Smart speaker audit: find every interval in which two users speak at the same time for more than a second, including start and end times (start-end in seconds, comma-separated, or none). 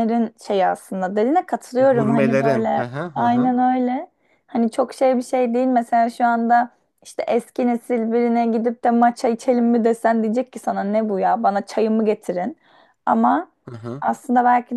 1.8-3.5